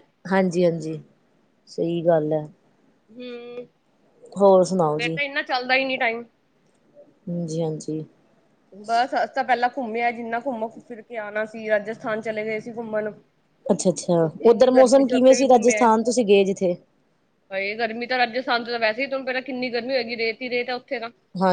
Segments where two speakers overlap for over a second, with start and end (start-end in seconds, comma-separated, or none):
14.2-15.8